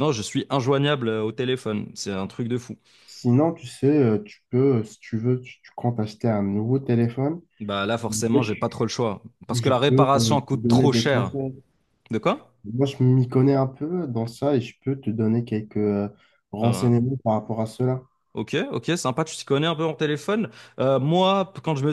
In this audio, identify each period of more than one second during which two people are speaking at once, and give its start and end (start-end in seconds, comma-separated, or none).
9.5-11.3